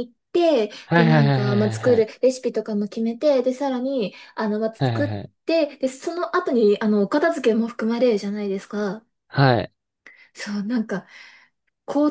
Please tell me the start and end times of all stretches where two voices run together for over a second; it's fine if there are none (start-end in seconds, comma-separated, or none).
0.8-2.1